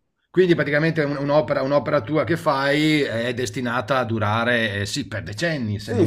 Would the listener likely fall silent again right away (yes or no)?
no